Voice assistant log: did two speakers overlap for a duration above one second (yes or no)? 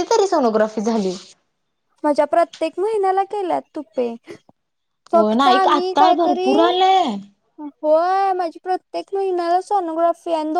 yes